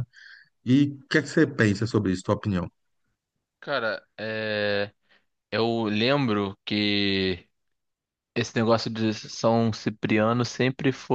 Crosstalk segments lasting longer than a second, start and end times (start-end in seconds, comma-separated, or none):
none